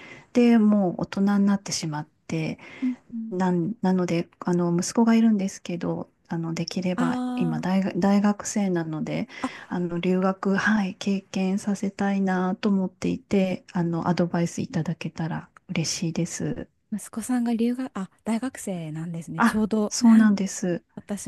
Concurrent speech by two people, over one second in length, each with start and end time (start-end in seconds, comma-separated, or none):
none